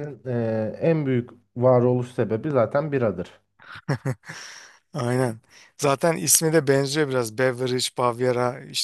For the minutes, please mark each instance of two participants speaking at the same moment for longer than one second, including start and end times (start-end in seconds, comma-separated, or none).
none